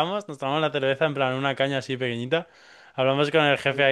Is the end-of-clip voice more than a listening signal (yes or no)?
no